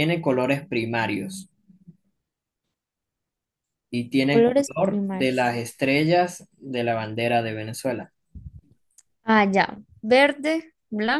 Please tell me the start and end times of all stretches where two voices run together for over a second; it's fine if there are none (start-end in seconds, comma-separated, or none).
4.2-5.7